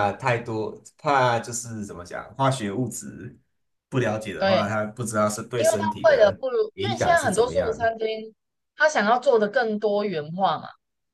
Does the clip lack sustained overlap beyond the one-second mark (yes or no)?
no